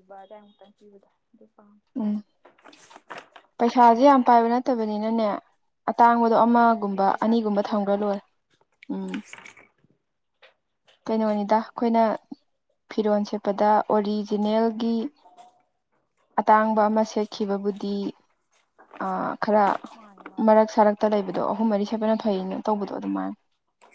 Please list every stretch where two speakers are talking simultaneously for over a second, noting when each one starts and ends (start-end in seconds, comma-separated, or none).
6.4-8.1